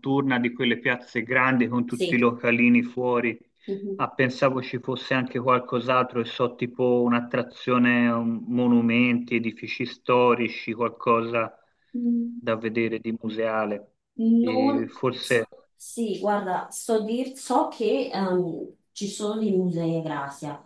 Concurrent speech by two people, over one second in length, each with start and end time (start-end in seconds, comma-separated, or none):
none